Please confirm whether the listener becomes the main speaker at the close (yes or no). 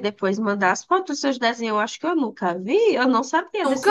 no